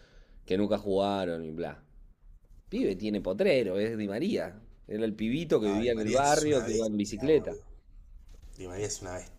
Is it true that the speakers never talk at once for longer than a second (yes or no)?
no